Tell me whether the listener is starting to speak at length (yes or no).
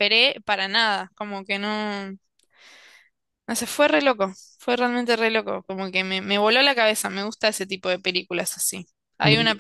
no